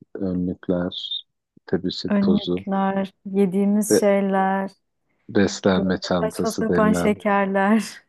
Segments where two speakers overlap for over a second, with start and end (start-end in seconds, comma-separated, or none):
5.8-7.2